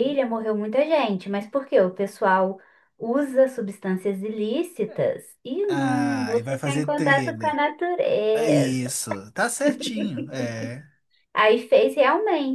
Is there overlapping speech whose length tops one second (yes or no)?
yes